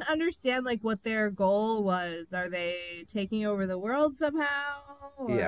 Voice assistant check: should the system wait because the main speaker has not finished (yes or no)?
no